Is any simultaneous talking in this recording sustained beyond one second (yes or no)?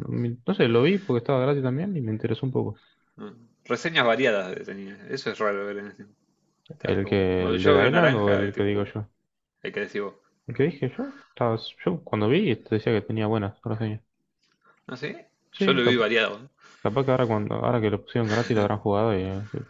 yes